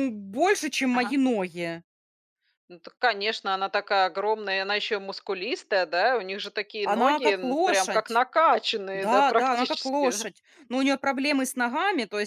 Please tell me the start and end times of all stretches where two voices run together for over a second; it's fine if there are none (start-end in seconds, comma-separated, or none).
6.8-8.2, 8.9-10.3